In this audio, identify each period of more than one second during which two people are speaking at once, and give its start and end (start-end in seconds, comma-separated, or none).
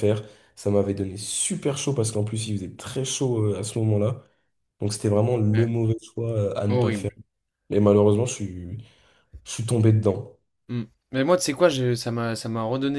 none